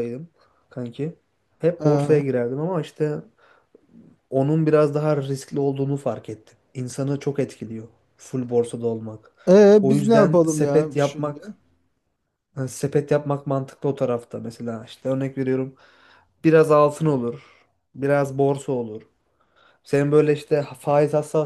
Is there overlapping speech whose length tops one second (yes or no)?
yes